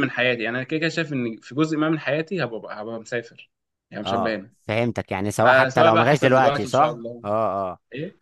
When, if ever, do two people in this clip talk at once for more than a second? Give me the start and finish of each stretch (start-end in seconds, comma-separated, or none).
5.3-7.2